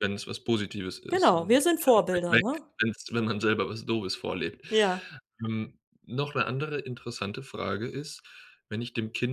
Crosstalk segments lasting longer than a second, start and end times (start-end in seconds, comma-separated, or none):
1.1-2.7